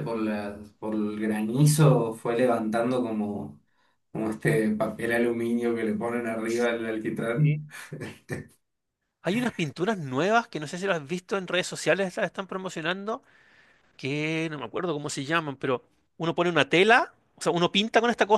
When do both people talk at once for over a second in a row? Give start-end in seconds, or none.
none